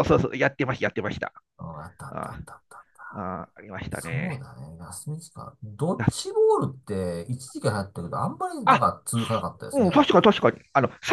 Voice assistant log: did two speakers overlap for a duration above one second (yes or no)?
no